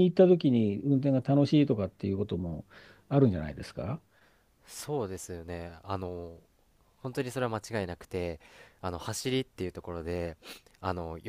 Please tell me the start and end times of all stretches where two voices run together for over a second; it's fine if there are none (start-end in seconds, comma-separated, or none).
none